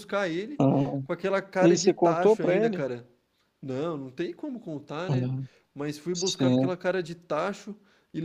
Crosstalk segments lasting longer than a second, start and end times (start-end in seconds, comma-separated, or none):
1.6-2.9